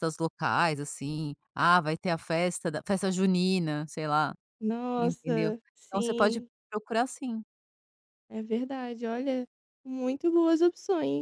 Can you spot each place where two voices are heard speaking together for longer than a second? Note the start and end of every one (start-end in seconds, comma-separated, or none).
5.0-6.5